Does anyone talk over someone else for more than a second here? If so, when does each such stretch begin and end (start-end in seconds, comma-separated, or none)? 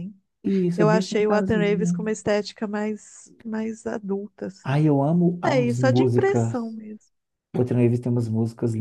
0.8-2.0, 5.5-6.8